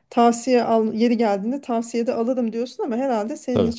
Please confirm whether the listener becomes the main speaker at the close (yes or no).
no